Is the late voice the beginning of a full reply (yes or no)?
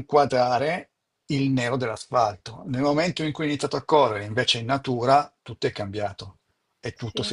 no